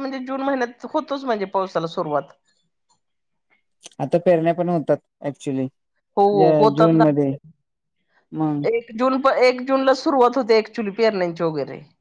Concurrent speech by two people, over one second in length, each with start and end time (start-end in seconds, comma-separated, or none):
none